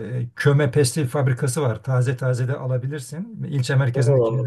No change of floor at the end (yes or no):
no